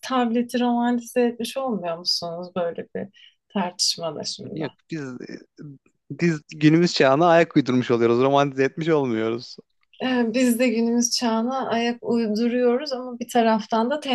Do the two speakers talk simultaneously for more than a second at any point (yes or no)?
no